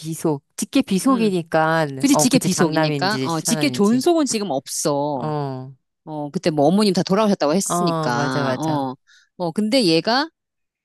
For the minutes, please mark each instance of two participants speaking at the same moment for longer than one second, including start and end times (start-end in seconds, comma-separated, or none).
2.0-4.0, 7.6-8.9